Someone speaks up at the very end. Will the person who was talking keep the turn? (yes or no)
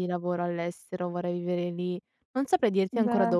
yes